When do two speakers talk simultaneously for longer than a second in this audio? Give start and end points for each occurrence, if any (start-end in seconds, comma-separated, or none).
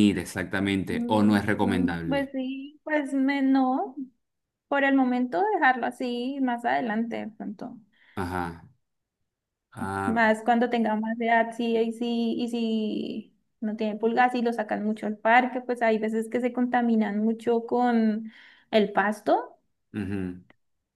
0.9-2.3